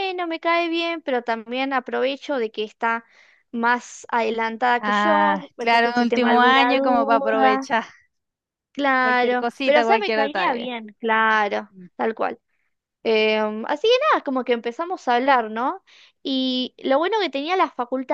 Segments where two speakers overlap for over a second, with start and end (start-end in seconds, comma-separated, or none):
4.8-7.7, 9.0-10.7